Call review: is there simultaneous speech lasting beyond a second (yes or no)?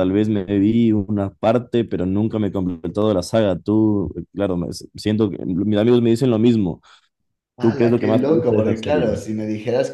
yes